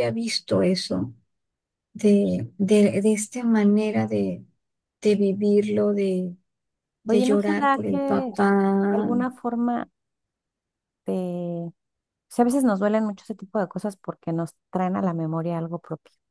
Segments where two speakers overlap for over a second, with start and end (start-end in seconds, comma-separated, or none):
7.1-8.3